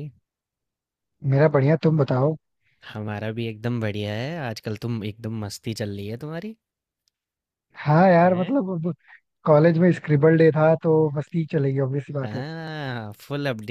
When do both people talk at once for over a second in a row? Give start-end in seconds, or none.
none